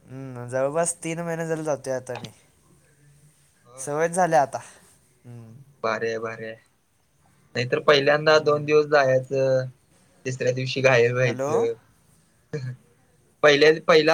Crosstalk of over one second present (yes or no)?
no